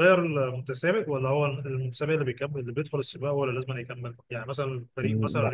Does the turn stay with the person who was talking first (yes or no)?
yes